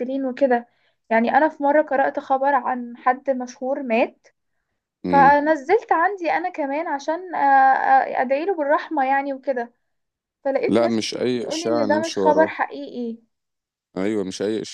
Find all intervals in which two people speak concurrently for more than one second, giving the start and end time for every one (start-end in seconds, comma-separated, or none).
10.7-12.6